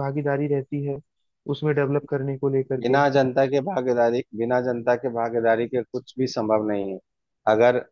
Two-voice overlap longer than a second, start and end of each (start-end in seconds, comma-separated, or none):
none